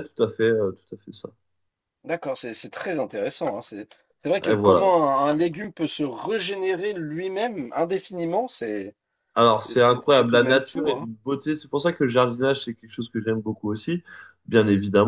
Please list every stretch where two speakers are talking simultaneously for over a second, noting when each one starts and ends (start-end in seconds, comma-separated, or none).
9.7-11.1